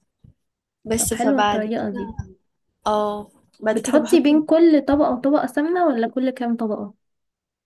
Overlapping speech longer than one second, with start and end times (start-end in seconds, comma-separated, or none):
0.9-2.1